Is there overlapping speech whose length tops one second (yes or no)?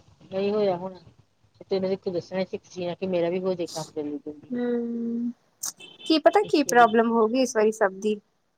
no